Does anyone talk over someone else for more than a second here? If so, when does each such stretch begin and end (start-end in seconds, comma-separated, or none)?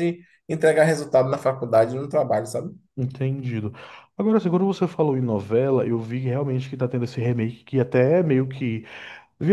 none